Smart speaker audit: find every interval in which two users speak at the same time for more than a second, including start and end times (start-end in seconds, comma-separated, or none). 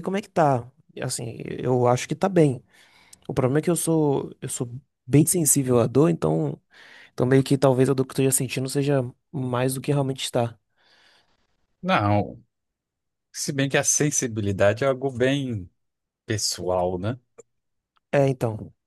none